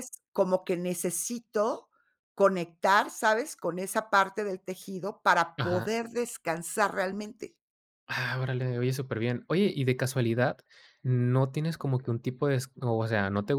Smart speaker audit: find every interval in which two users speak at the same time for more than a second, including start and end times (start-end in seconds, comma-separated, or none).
none